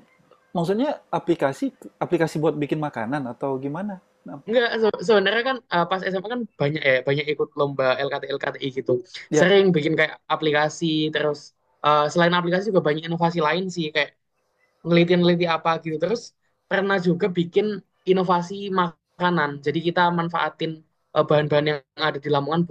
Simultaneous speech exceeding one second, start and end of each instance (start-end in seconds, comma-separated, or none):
none